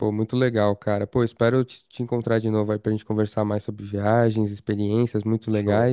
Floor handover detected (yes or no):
no